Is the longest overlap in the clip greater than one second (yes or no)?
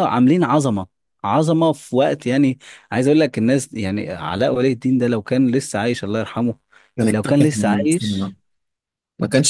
yes